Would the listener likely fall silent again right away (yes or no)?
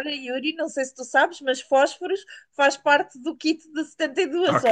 no